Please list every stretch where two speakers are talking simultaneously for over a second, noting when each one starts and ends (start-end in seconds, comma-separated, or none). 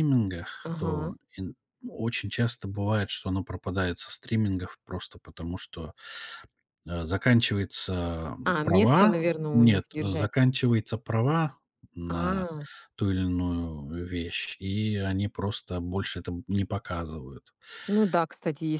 8.4-10.3